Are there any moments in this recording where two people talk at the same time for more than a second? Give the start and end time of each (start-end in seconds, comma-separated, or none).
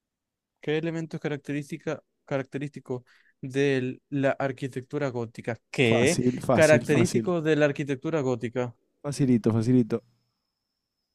5.9-7.2